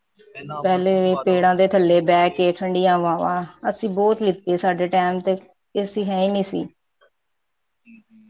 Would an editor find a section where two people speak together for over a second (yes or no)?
yes